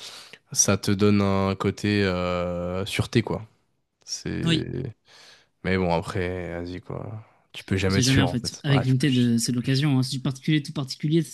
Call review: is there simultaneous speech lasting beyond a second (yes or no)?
yes